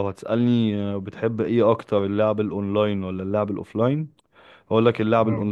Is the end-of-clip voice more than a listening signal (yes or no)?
no